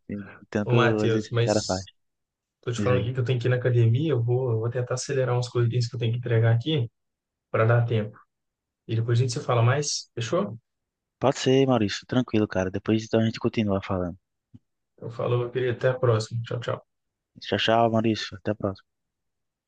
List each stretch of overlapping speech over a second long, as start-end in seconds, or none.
0.6-1.8